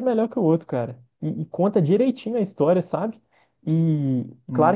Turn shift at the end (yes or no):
no